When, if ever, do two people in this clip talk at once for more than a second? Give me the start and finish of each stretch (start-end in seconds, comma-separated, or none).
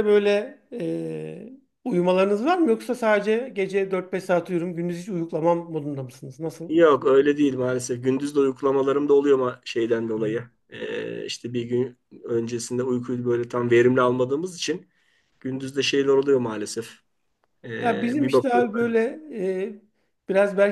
17.8-19.0